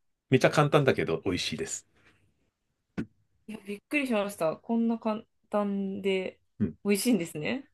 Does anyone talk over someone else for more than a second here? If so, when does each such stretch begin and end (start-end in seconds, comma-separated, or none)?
none